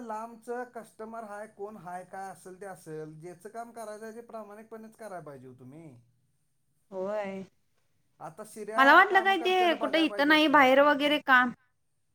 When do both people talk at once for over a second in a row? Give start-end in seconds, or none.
8.8-10.6